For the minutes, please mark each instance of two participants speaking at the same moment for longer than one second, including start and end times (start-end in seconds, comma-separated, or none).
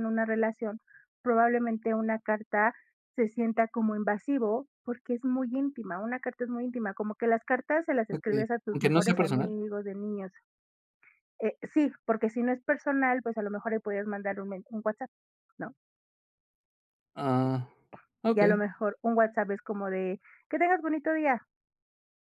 8.1-9.5